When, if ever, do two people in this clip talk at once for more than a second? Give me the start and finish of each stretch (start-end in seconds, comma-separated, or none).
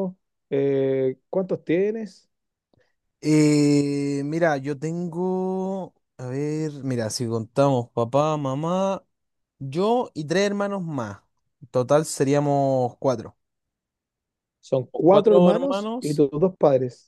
14.9-16.2